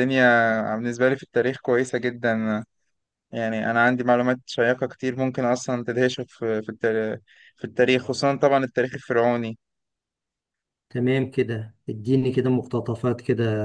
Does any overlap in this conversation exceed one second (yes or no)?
no